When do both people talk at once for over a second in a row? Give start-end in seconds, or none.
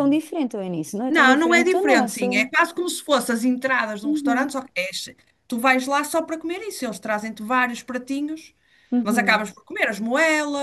1.1-2.5